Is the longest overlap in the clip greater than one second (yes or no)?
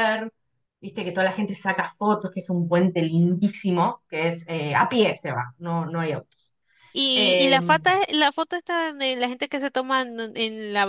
no